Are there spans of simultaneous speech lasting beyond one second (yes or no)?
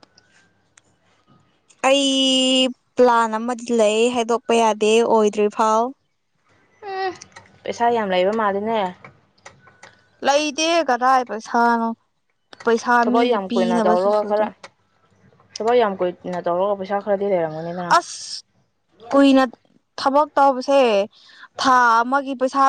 no